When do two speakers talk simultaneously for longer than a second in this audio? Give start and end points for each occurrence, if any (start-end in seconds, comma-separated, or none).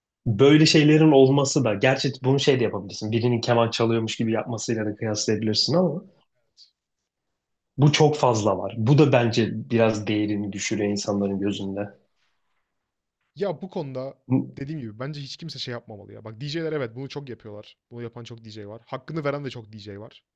none